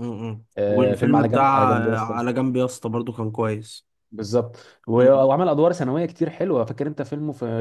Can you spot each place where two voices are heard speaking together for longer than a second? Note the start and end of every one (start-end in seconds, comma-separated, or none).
0.6-2.2